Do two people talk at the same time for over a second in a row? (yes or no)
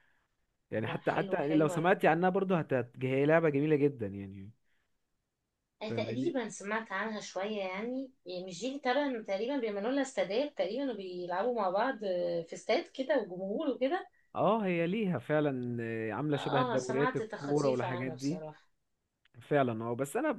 yes